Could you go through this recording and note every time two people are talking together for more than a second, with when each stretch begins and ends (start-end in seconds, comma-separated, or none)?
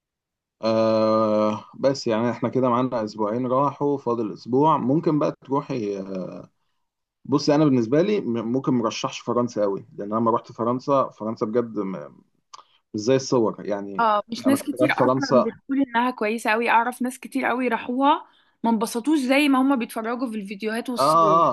14.0-15.5